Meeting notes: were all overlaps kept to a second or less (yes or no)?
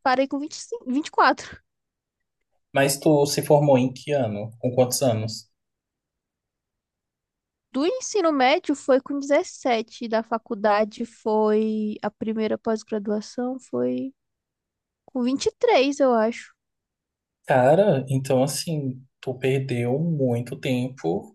yes